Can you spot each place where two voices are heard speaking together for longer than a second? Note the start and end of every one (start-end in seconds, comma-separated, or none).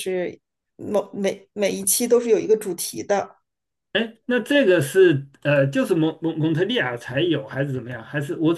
none